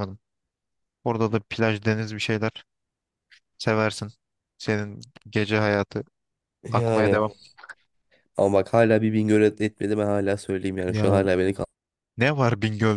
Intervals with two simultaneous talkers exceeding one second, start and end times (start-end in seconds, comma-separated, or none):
none